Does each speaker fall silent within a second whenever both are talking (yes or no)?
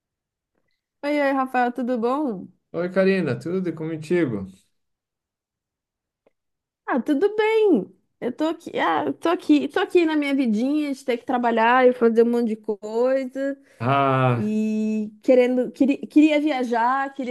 yes